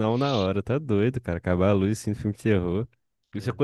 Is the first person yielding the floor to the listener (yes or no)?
no